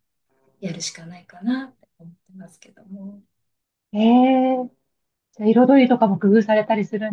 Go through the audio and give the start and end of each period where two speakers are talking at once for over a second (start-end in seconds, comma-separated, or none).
none